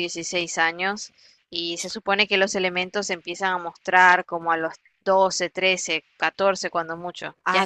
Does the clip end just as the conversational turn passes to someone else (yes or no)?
yes